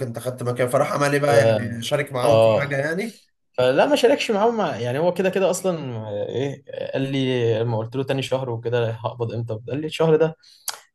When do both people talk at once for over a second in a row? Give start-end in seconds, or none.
none